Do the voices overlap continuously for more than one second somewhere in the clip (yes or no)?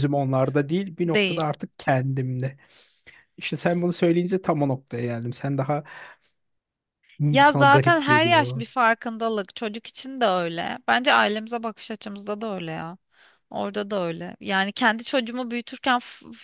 yes